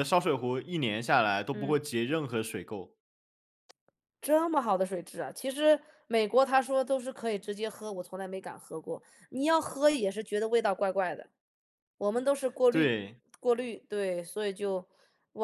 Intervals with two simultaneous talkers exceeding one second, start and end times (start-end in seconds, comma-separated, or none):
none